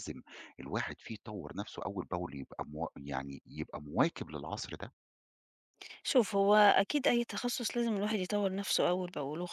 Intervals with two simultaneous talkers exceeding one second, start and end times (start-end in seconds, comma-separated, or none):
none